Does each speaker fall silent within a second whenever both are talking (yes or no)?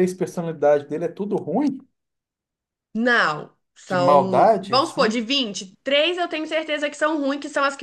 no